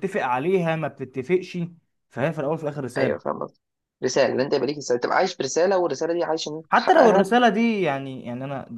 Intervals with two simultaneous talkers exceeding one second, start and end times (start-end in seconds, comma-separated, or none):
none